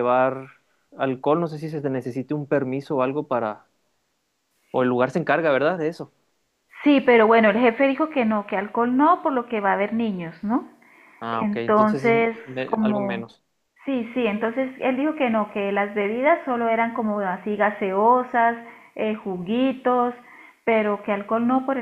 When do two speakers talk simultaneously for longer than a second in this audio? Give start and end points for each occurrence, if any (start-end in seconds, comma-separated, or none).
11.3-13.3